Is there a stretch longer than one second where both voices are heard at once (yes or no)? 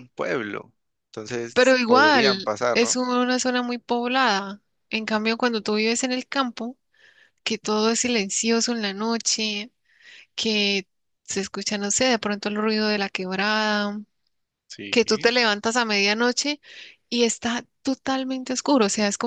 yes